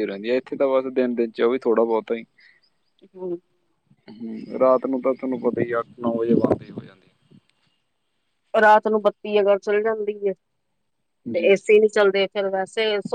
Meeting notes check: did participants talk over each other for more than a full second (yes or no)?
no